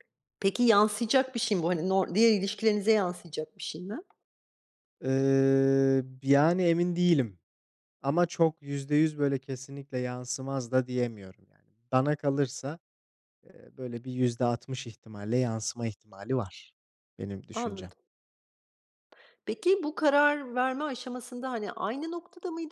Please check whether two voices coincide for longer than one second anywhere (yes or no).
no